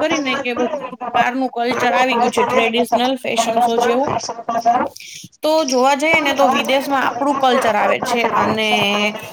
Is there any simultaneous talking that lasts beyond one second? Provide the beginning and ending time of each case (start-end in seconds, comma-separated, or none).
6.2-8.7